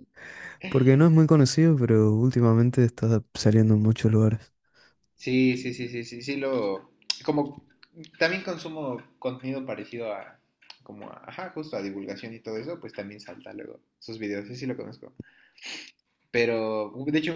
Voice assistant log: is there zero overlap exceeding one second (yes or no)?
yes